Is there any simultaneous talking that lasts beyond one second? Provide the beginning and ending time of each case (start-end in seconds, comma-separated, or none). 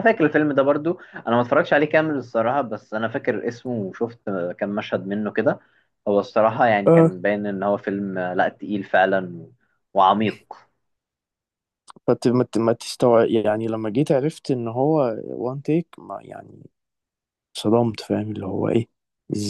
none